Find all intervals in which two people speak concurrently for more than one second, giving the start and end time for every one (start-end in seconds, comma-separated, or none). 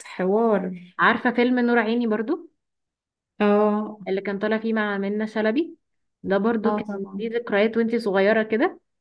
none